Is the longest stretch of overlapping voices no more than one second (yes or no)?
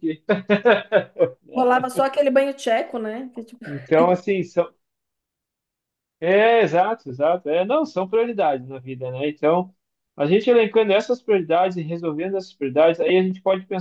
yes